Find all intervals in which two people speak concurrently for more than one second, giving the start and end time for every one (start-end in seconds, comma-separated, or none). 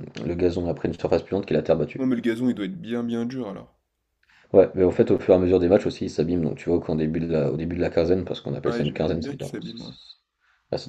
8.6-9.9